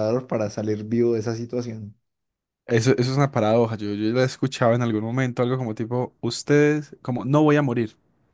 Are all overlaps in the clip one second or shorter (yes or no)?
yes